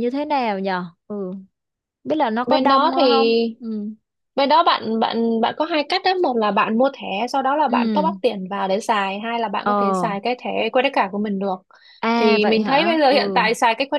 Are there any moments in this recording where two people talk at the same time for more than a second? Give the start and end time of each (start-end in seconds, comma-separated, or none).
12.2-13.4